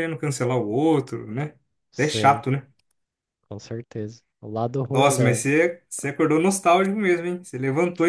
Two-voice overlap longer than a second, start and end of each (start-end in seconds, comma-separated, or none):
none